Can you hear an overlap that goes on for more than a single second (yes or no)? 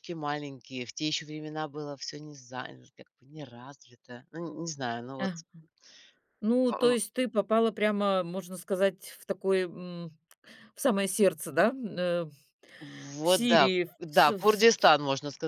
yes